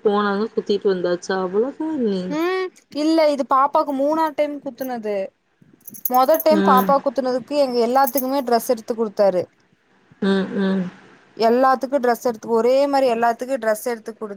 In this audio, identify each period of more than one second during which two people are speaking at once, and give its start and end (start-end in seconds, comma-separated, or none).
none